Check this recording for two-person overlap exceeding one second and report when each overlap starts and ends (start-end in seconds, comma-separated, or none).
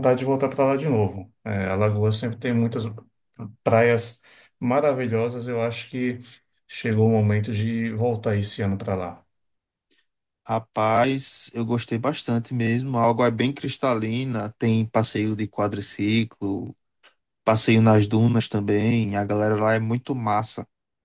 none